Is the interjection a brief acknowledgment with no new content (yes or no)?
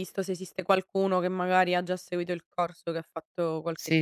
no